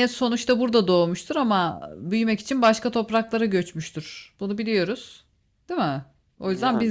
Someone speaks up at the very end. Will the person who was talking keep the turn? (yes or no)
yes